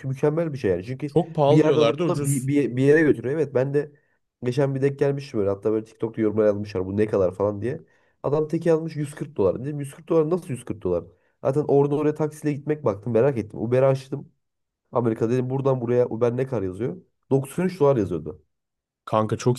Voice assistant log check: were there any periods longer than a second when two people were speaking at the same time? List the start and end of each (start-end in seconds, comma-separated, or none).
1.1-2.5